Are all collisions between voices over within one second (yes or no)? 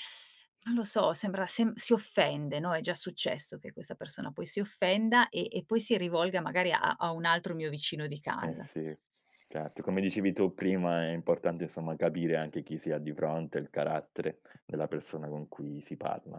yes